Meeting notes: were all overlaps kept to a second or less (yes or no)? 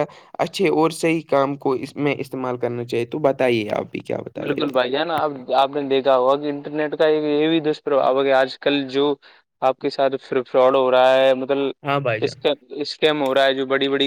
yes